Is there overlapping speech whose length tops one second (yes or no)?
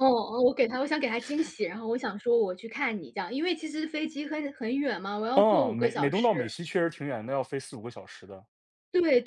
yes